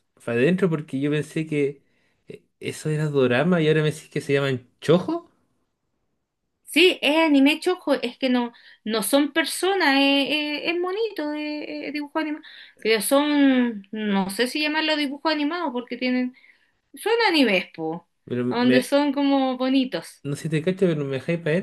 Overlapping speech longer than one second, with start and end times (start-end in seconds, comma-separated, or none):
none